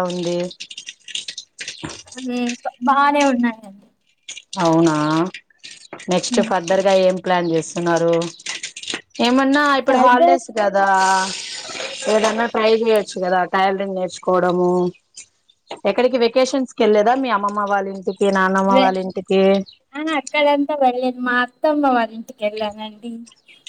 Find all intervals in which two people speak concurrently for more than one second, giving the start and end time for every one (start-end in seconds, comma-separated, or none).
none